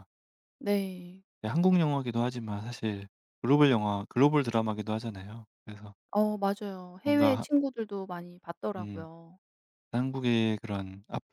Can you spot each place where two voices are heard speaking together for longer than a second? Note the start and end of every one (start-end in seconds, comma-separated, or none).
none